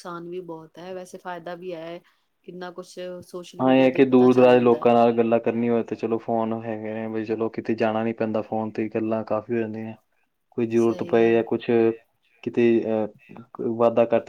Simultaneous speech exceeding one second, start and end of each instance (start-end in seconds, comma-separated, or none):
3.6-4.9